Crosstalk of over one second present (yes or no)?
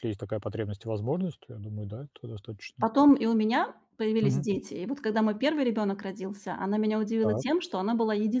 no